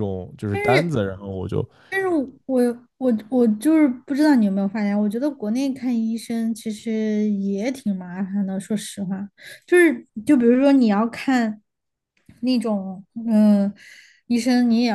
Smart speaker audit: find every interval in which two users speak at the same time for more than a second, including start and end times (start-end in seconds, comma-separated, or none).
none